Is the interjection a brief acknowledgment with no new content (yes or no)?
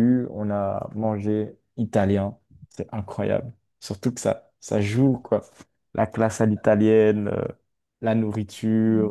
no